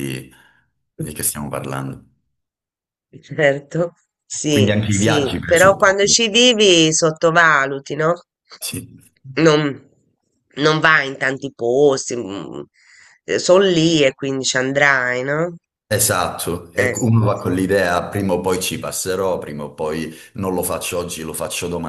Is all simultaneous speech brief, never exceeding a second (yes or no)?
no